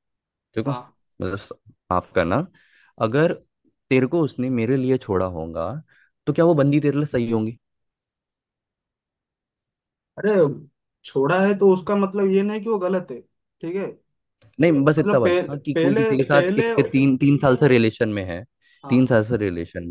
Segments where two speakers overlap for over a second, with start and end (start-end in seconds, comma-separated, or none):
15.0-16.7